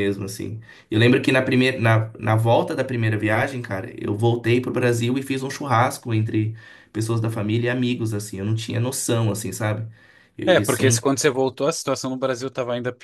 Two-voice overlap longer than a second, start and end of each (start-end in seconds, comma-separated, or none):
none